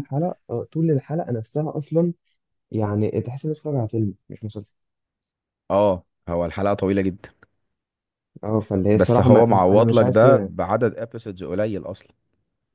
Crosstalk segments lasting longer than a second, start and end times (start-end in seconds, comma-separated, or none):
8.9-10.5